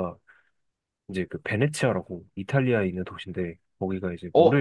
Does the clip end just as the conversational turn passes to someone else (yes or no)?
yes